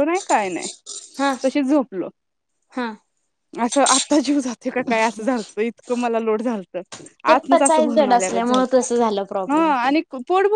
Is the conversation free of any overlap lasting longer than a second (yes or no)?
no